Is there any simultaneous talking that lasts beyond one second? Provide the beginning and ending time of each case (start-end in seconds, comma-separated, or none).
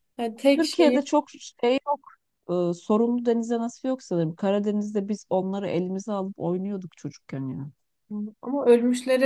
none